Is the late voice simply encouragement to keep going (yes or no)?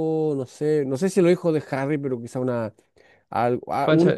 no